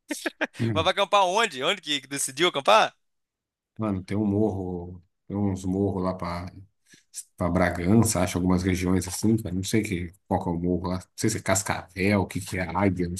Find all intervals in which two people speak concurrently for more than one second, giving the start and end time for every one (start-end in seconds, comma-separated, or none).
none